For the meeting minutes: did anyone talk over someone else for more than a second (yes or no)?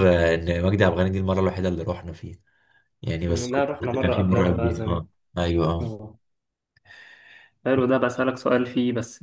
yes